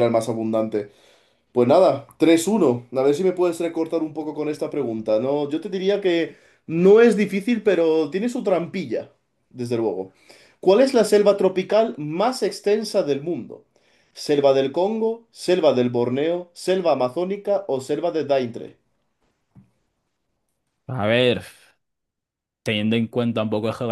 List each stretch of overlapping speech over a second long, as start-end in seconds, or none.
none